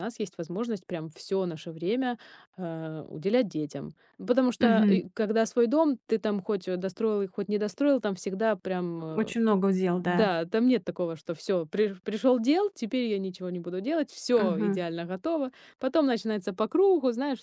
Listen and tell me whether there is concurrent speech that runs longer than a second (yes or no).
no